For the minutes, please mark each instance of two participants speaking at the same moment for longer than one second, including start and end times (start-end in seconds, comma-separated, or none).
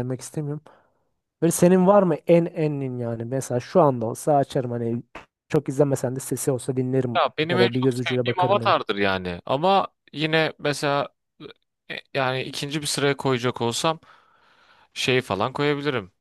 7.2-8.8